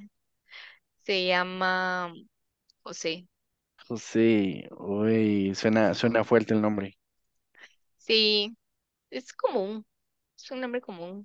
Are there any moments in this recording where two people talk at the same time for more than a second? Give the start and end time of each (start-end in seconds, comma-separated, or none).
none